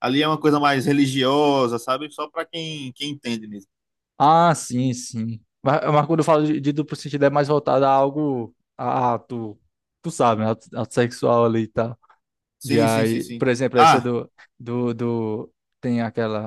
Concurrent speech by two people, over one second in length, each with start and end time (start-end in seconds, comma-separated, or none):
12.6-14.1